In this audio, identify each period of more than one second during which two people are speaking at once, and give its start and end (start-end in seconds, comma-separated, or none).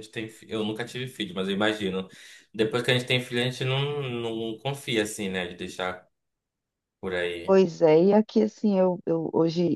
none